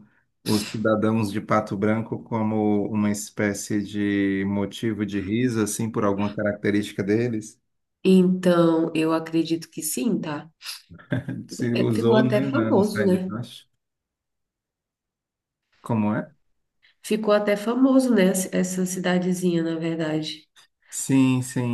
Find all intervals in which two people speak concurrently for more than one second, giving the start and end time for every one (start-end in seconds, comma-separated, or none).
11.7-13.4